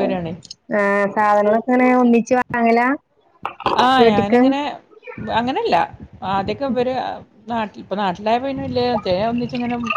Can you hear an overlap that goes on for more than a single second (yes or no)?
no